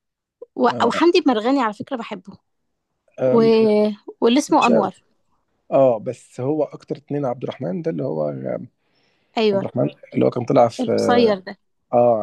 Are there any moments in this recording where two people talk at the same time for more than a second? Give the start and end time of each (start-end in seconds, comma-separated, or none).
none